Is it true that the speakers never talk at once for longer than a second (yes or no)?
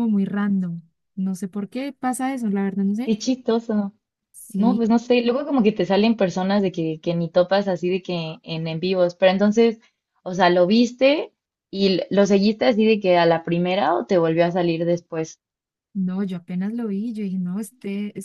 yes